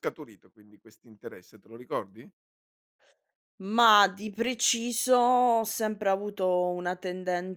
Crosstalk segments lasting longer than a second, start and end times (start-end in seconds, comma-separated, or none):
none